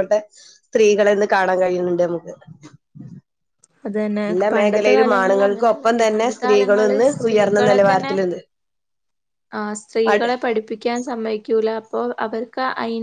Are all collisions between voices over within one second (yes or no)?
no